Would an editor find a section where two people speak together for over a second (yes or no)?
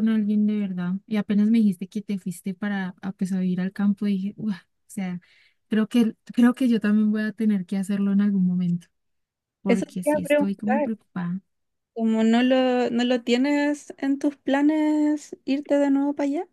yes